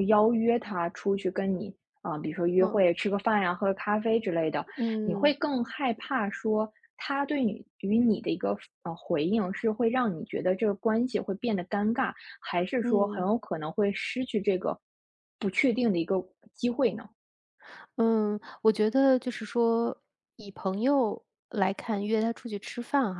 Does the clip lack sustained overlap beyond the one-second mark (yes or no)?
yes